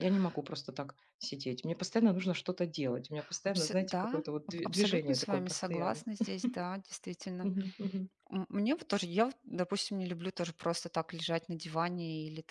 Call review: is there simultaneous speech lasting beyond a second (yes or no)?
yes